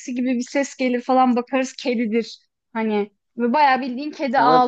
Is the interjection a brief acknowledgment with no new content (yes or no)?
yes